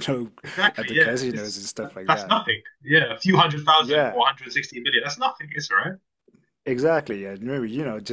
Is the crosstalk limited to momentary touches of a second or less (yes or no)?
no